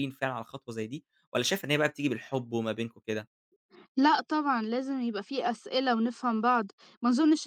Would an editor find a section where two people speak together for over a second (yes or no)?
no